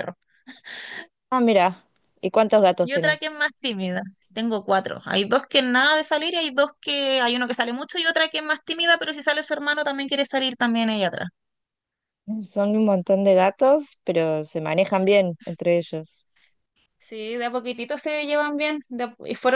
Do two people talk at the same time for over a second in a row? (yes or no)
no